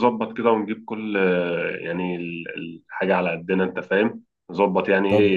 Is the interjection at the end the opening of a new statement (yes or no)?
yes